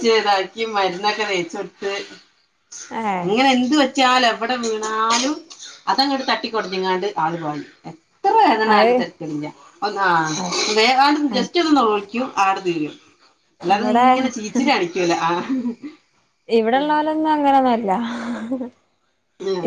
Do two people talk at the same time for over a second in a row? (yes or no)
no